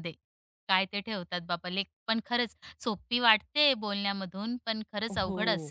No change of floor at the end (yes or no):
no